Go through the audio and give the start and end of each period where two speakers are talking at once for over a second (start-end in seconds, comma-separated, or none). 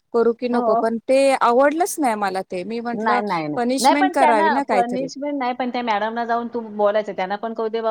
3.0-5.1